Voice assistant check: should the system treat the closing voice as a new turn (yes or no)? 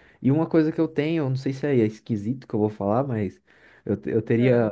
no